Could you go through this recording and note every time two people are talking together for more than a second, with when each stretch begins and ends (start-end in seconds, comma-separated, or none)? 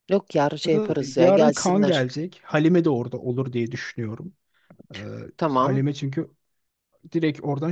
0.6-2.0